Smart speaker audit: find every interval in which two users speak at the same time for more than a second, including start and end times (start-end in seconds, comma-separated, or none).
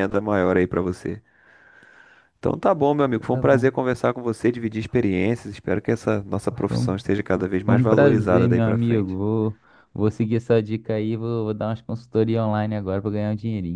7.6-9.2